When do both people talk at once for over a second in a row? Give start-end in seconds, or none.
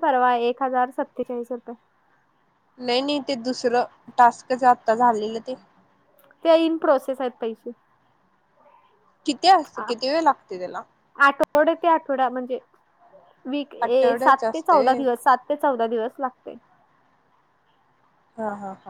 13.9-15.2